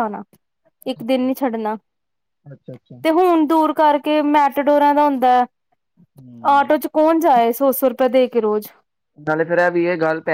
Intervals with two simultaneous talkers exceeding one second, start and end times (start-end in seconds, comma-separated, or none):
none